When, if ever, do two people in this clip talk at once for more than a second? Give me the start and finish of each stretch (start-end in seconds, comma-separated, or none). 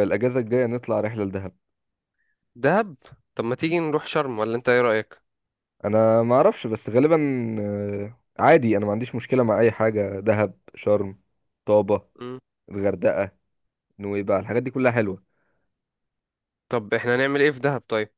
none